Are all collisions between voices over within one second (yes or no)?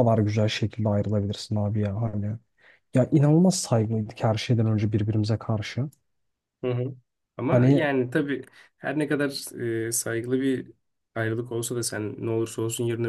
yes